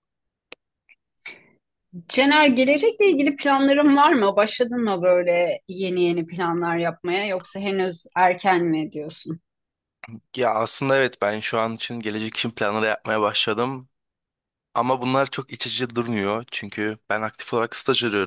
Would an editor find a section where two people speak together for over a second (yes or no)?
no